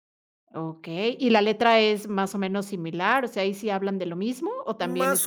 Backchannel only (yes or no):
no